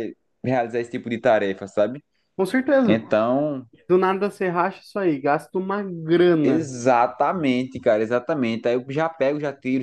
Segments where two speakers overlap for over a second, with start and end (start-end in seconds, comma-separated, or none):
none